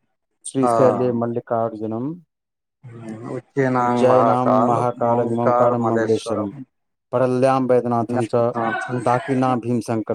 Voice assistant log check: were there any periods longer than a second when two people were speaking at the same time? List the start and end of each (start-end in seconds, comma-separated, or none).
3.9-6.5